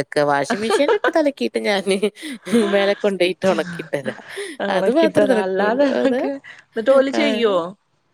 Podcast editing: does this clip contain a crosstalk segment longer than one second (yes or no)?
yes